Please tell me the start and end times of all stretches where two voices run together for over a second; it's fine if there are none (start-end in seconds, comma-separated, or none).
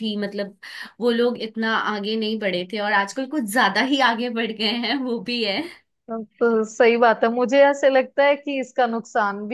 none